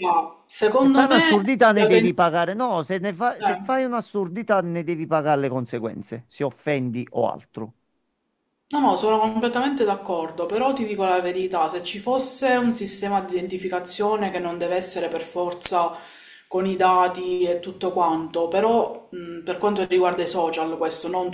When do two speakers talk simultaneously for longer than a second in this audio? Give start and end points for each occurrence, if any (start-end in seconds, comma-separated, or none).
0.7-2.1